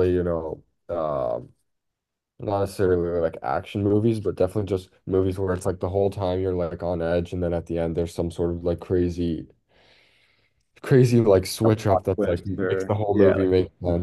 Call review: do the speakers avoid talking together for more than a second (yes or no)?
no